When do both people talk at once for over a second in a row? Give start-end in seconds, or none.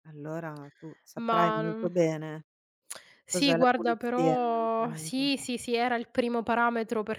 3.3-5.3